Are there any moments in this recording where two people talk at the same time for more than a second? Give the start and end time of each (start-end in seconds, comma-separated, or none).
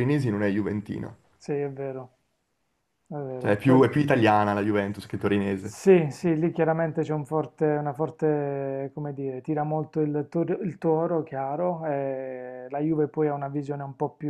none